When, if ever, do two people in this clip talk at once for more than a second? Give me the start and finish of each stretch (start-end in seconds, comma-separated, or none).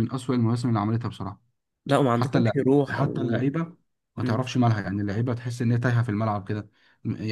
2.1-3.4